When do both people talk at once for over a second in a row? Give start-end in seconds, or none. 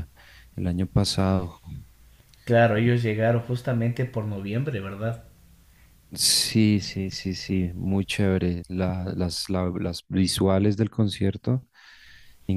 none